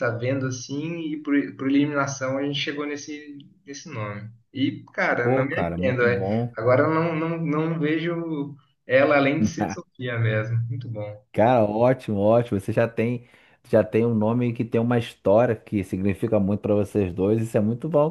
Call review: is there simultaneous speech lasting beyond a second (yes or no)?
yes